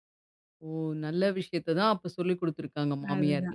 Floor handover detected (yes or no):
yes